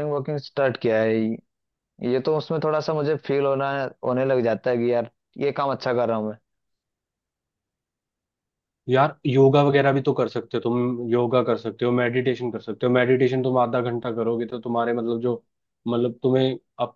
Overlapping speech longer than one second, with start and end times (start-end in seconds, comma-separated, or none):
none